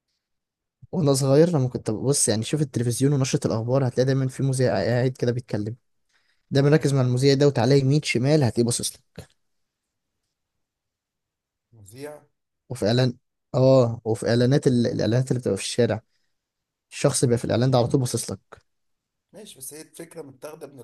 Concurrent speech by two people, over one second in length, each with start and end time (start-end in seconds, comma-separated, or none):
none